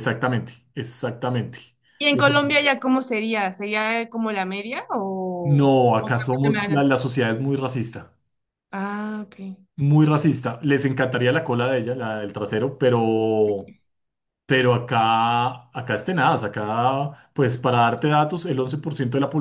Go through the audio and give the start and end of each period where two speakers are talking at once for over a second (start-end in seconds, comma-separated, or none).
5.4-6.8